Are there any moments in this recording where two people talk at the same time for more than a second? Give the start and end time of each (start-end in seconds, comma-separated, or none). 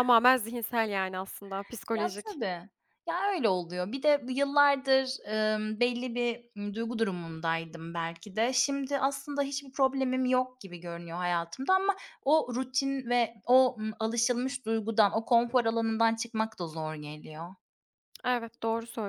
none